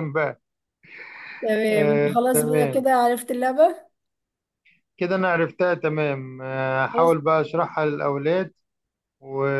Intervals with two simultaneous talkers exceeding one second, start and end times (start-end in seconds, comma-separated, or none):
1.7-2.9